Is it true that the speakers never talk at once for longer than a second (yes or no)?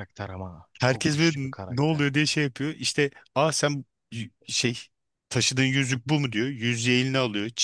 no